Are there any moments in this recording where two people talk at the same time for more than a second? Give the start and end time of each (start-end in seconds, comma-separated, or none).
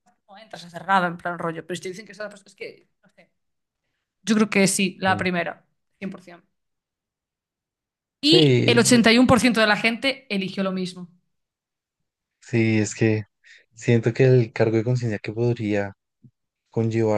none